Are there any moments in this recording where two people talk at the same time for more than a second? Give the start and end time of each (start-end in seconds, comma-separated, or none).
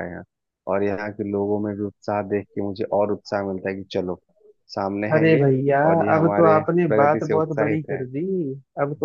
6.2-8.0